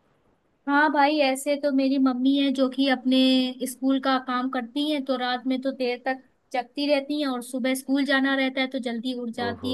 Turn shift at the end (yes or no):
no